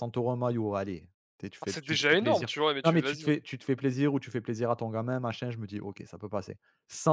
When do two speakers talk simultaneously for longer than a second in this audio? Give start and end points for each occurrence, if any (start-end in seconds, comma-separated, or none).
1.6-3.3